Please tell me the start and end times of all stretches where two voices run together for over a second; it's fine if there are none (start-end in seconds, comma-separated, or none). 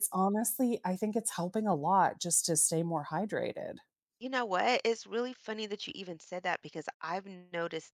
none